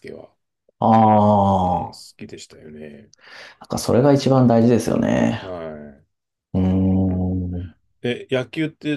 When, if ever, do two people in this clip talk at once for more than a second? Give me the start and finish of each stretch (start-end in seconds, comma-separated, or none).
none